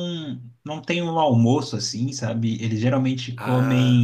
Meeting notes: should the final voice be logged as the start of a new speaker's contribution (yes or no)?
no